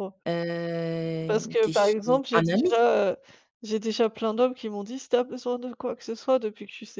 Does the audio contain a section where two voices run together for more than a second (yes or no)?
yes